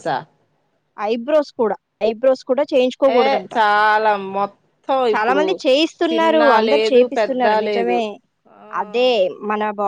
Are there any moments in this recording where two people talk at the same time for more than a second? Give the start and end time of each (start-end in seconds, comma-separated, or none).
6.1-8.0